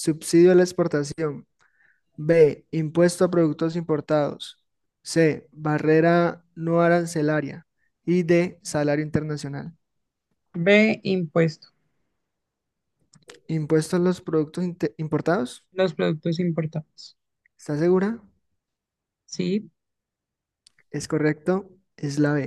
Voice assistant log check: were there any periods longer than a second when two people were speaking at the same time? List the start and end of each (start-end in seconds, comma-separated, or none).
none